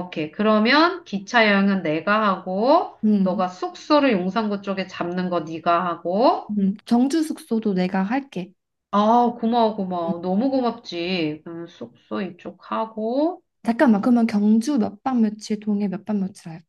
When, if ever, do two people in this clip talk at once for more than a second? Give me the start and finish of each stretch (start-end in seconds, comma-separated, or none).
none